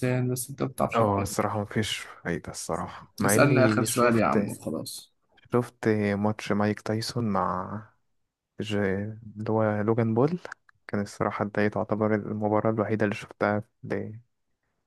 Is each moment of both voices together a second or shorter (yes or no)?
no